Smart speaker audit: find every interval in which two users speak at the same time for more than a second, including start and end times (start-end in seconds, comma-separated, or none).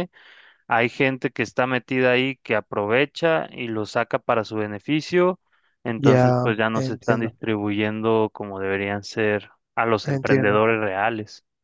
6.0-7.3